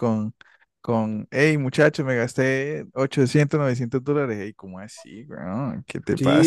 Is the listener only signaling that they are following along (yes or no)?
no